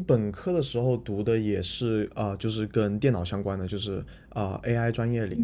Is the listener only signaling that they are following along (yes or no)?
no